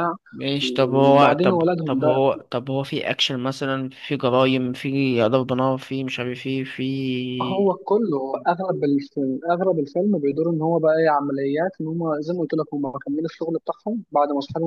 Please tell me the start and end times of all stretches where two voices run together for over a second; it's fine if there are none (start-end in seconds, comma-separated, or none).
0.6-2.2